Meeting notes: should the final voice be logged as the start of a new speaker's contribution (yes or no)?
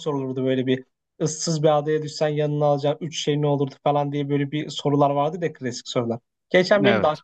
no